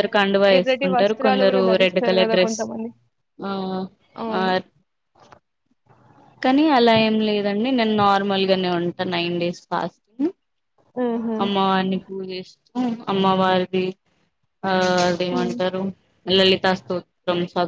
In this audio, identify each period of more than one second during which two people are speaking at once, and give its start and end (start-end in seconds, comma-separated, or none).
0.6-2.6